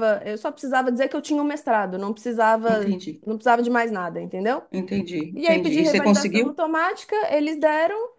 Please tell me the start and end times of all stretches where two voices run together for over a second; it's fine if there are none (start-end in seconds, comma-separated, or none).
5.3-6.6